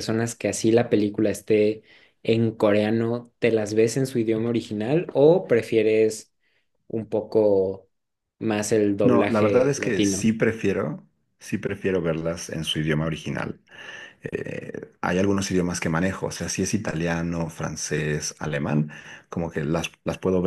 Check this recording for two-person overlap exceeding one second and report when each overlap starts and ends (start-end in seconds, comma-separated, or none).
9.0-10.3